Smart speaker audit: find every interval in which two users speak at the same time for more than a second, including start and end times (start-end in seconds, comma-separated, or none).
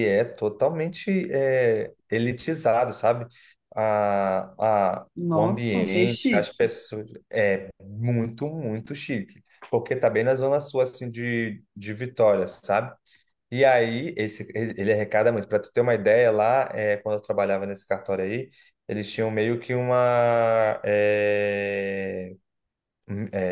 5.2-6.7